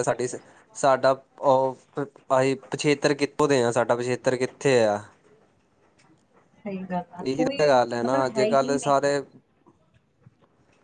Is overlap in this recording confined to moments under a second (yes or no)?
no